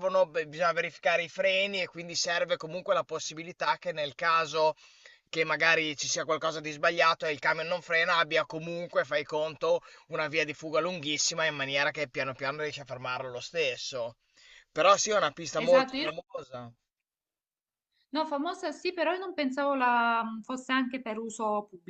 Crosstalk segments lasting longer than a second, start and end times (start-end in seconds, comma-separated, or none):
none